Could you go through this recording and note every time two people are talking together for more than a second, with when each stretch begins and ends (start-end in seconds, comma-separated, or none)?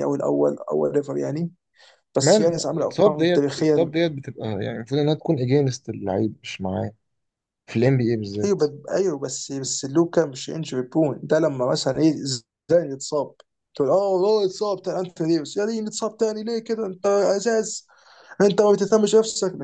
2.2-3.9